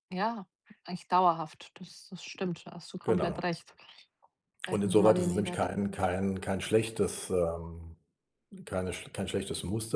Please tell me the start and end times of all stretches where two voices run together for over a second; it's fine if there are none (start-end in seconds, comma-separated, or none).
4.7-6.0